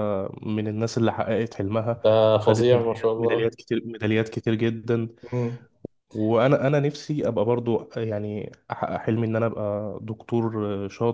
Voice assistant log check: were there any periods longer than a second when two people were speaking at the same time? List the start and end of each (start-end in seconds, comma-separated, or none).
2.0-3.5